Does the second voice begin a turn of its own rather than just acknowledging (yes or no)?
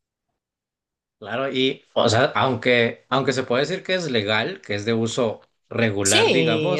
yes